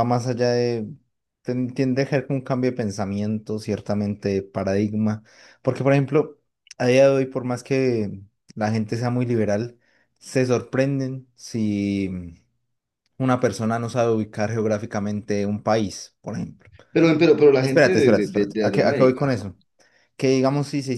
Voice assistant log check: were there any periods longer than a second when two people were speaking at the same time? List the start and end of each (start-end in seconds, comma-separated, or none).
17.6-19.3